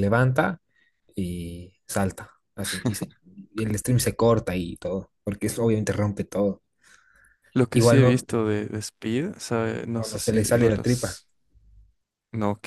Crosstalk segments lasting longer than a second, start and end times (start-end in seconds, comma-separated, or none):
9.9-11.2